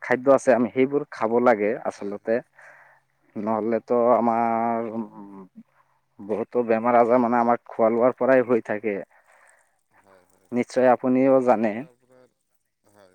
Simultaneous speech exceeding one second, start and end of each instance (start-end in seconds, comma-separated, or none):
none